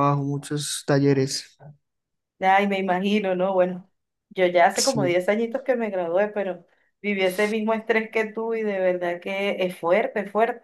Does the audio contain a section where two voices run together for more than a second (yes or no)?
no